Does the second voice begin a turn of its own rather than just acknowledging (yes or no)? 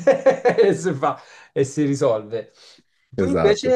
no